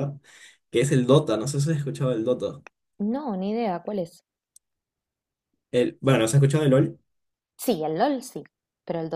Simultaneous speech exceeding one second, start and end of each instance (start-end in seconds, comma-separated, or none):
none